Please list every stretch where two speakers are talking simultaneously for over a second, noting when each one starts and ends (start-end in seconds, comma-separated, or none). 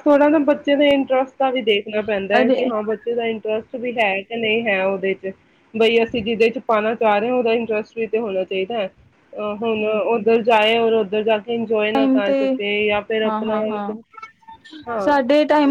none